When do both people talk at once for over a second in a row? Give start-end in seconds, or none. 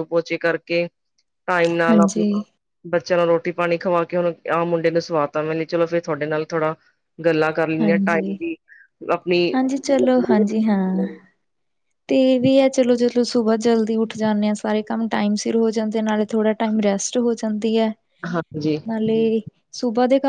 none